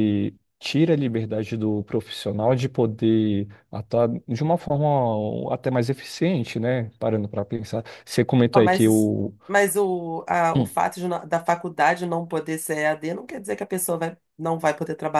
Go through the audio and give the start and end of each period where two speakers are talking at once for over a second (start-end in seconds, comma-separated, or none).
none